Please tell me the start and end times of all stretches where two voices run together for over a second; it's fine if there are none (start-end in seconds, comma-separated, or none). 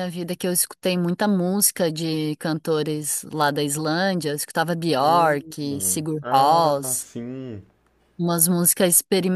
5.0-7.1